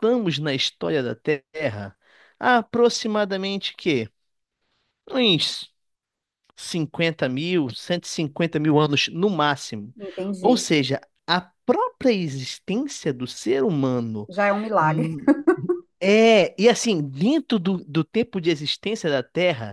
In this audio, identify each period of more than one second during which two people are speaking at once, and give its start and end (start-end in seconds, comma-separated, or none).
none